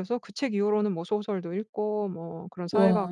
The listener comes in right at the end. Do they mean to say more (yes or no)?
no